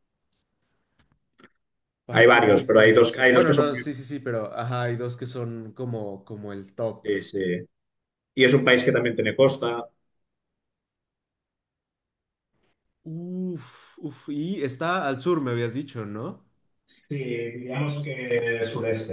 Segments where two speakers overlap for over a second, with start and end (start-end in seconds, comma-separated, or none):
2.1-3.8